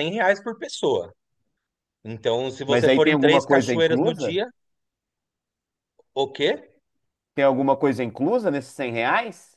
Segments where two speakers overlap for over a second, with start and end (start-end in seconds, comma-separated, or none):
2.7-4.4